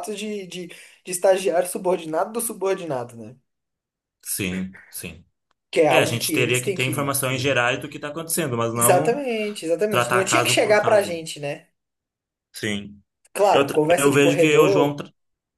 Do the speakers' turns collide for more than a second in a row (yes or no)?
yes